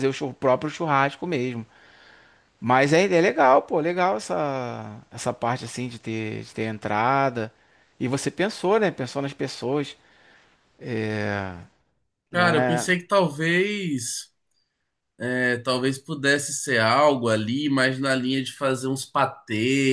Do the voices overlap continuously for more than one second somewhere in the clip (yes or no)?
no